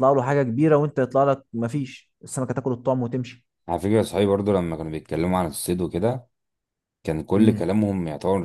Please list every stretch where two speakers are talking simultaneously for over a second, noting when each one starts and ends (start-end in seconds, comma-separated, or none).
none